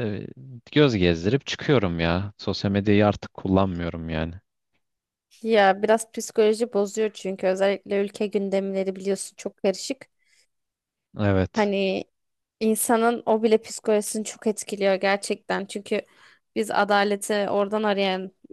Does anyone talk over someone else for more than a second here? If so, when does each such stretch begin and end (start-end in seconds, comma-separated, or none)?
none